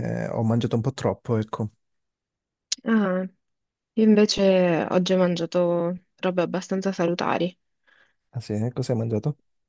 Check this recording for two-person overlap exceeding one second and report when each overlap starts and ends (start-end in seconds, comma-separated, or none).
none